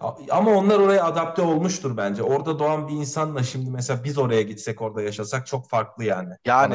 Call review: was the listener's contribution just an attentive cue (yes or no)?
no